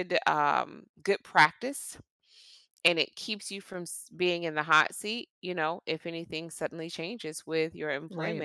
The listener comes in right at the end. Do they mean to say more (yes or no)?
no